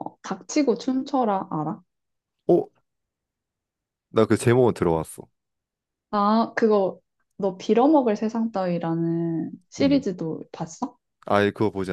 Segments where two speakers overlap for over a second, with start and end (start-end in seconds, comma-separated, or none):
none